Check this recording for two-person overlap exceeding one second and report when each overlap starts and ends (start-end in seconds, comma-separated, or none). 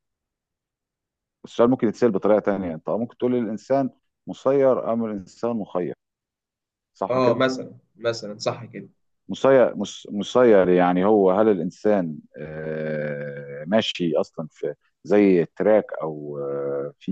none